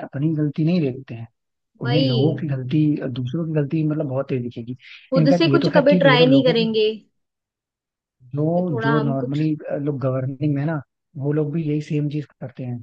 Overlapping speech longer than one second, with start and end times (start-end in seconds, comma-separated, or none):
5.2-6.7